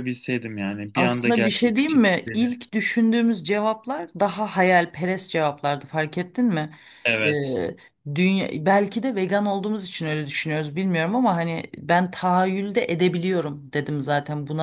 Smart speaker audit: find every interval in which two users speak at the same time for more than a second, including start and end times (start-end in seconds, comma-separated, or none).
0.9-2.5